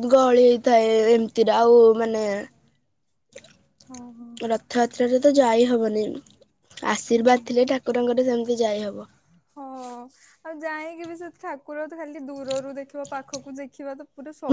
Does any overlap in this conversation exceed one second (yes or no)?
no